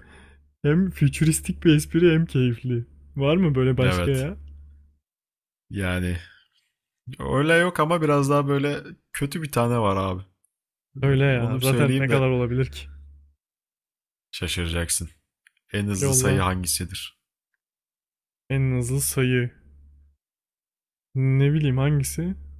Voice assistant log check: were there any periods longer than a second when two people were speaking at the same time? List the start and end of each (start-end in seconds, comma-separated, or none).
11.0-12.2